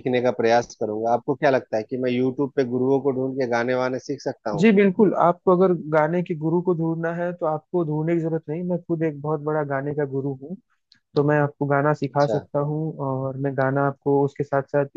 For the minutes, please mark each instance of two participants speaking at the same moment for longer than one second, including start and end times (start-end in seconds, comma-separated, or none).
none